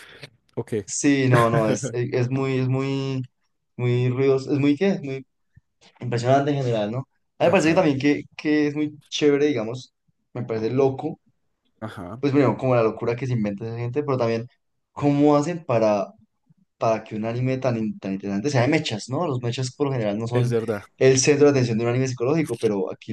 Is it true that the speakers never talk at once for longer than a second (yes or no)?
yes